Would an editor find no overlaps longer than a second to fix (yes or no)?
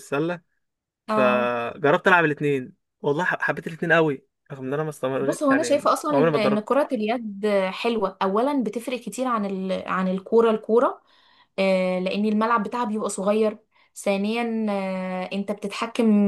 no